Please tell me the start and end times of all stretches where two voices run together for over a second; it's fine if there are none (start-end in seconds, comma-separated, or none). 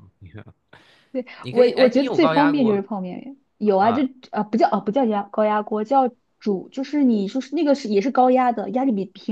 1.4-2.8